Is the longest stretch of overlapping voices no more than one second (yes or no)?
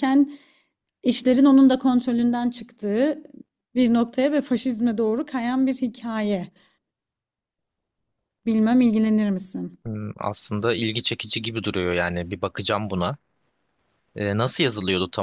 yes